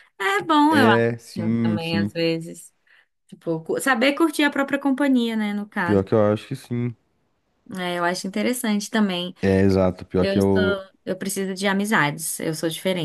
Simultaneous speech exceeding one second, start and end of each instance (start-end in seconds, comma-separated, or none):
0.7-2.1